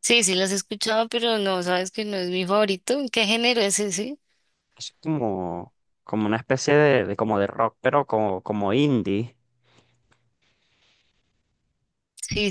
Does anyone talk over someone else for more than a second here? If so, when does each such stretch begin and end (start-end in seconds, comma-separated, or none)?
none